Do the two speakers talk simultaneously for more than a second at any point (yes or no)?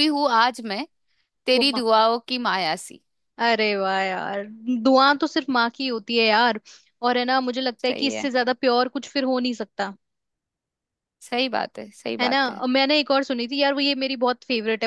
no